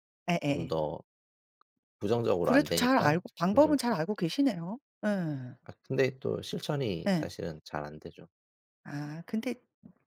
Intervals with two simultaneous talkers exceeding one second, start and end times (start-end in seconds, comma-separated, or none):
2.4-4.0